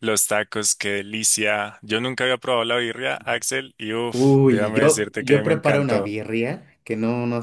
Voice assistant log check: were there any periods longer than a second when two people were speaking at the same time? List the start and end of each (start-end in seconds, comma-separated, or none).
4.1-6.1